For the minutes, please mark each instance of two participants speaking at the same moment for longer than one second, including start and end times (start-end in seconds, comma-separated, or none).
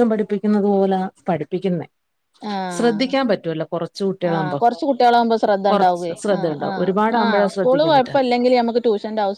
6.2-8.2